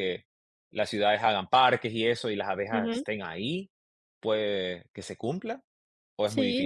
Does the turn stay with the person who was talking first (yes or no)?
no